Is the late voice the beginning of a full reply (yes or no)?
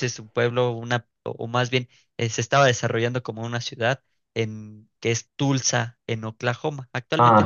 no